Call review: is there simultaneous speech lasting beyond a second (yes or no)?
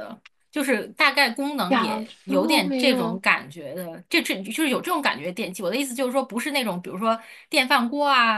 yes